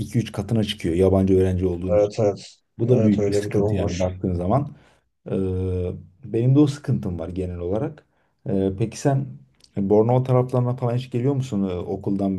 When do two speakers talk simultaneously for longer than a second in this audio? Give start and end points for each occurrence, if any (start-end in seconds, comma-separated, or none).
2.8-4.1